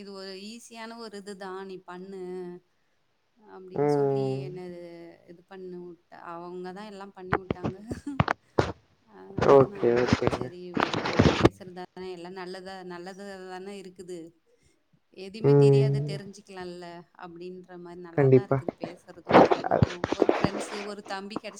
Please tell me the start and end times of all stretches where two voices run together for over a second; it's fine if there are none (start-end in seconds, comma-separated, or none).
none